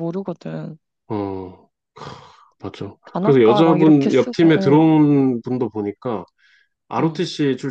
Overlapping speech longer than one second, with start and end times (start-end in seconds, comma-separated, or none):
3.0-4.9